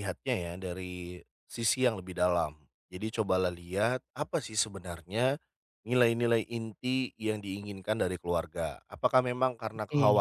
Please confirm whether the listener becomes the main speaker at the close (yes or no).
no